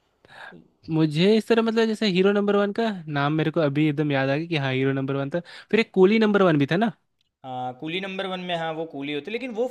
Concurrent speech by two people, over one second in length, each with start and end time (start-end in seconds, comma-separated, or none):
none